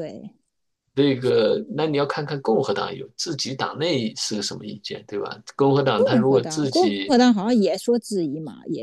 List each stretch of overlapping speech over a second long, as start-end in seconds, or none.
6.0-7.2